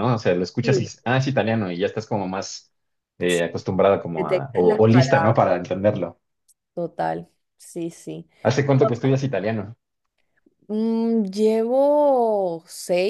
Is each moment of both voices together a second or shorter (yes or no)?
no